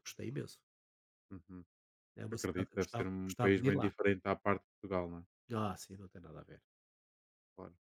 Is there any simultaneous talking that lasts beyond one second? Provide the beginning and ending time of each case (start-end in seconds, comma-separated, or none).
2.3-3.9